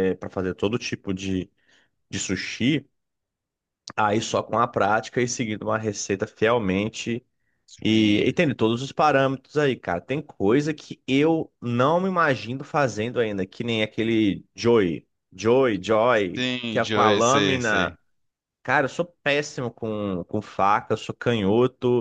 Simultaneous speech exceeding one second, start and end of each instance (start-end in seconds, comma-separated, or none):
16.4-18.0